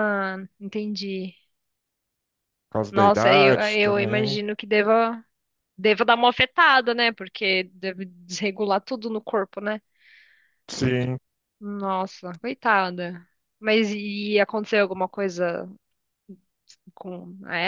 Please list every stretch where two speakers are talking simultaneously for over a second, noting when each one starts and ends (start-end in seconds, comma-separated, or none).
2.9-4.4